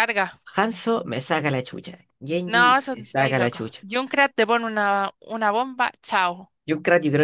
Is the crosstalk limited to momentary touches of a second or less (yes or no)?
no